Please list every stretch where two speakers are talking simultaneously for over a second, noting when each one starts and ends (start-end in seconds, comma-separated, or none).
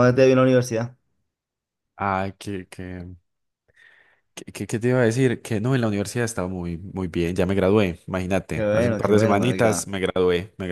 8.6-9.9